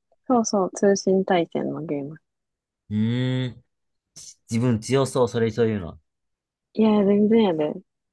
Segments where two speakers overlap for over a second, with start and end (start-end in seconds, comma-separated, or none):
none